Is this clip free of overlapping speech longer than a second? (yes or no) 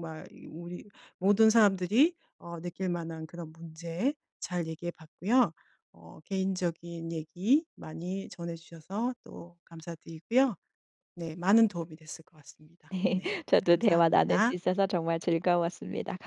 no